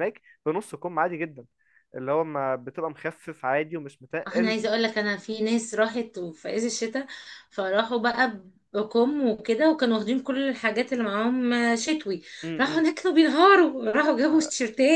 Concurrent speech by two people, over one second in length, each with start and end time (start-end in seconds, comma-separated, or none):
none